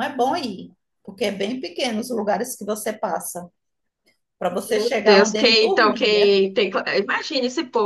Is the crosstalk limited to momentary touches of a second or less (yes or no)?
no